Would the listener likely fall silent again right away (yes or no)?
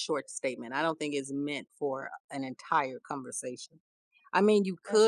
yes